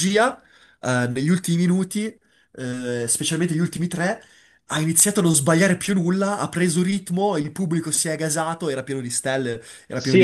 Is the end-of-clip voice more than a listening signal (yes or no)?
yes